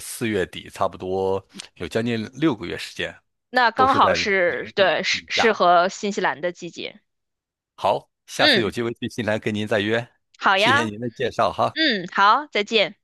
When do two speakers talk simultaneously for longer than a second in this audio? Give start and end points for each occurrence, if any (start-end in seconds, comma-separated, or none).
3.7-5.5